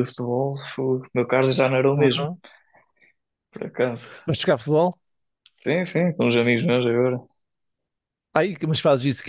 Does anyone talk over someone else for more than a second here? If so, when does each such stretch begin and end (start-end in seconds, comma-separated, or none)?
none